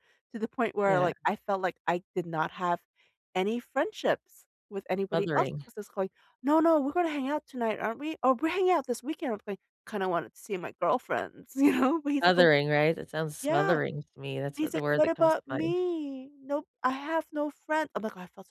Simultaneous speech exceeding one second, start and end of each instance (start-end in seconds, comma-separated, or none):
14.6-15.8